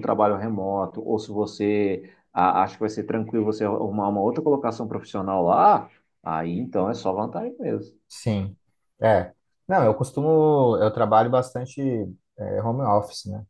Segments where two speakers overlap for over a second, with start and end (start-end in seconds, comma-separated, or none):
none